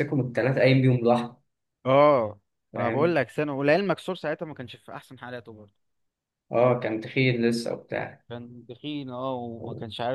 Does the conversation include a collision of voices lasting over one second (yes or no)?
no